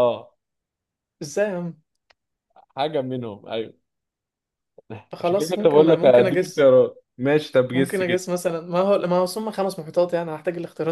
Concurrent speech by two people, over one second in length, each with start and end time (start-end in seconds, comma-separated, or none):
5.2-6.7